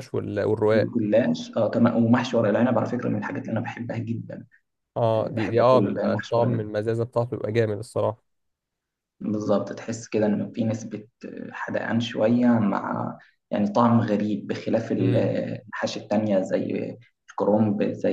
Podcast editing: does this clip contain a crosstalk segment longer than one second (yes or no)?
yes